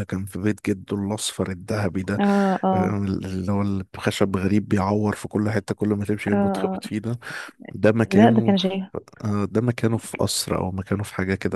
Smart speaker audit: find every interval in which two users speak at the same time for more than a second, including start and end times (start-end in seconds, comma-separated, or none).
none